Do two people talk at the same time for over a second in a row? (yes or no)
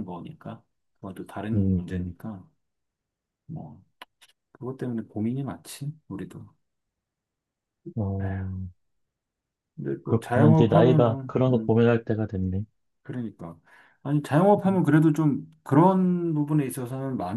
yes